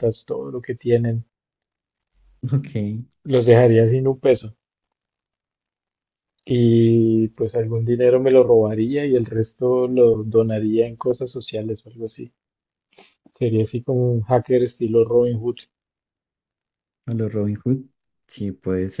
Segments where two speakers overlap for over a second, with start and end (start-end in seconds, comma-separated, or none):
none